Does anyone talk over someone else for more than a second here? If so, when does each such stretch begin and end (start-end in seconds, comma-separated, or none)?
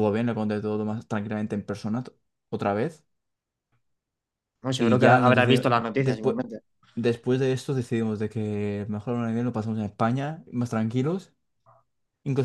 4.8-6.4